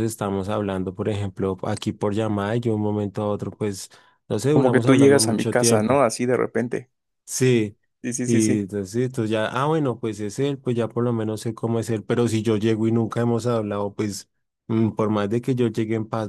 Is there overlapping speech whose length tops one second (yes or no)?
yes